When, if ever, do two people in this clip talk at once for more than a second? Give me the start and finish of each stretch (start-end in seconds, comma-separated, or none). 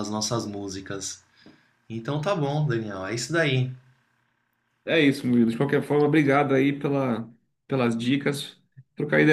none